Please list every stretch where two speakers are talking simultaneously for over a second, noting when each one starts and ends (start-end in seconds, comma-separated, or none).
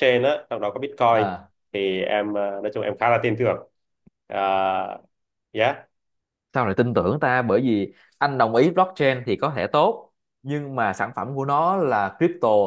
none